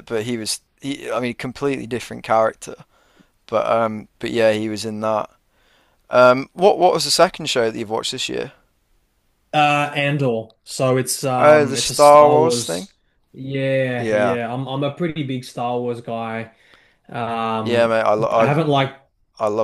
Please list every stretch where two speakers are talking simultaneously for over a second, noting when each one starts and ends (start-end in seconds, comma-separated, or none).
11.4-12.9